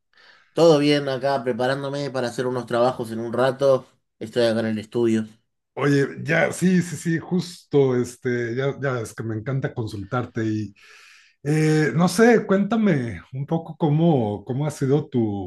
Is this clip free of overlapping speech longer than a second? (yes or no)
yes